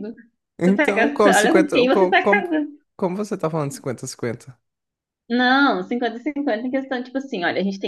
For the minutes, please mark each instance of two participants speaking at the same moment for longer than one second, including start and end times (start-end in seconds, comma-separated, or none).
0.6-2.5